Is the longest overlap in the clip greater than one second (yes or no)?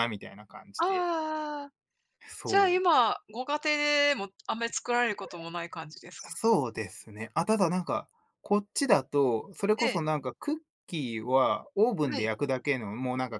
no